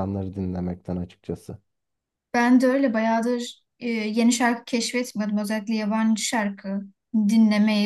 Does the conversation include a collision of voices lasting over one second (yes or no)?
no